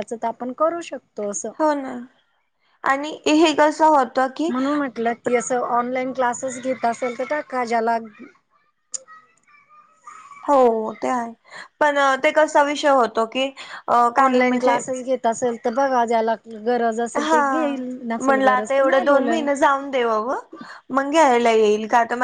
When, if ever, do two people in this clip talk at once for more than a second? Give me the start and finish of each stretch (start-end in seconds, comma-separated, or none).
18.2-19.4